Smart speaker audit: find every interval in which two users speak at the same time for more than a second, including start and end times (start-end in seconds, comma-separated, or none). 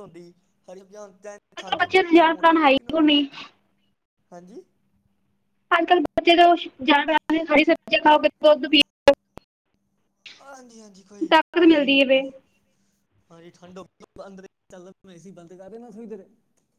1.6-3.2